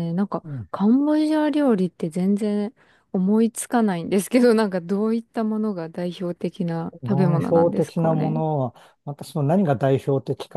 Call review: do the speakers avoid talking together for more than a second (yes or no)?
no